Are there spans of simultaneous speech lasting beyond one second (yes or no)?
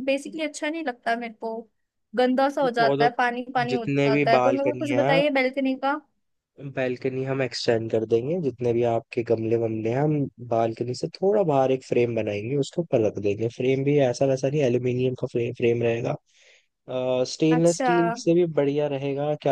yes